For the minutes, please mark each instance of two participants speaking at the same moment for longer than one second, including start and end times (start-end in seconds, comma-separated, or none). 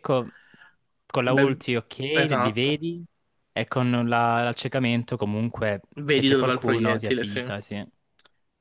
6.0-7.4